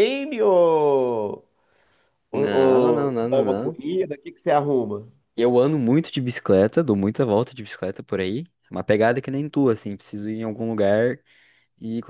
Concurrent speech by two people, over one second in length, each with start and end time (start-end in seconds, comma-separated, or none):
2.3-3.8